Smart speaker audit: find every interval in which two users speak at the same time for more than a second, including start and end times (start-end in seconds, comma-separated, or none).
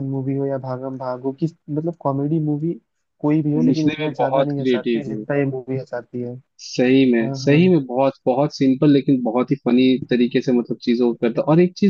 3.6-5.2